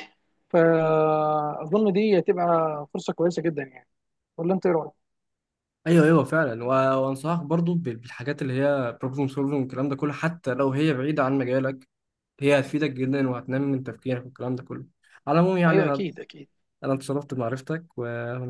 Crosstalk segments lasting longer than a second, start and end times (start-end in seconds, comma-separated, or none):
none